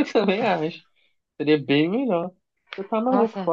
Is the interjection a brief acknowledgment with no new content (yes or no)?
yes